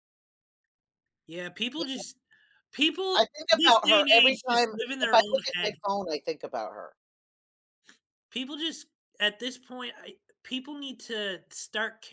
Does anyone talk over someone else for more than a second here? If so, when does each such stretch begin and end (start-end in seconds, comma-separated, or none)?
3.1-5.7